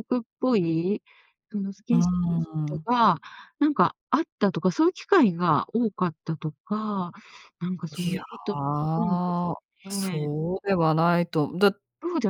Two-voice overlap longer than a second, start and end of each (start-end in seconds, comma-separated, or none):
none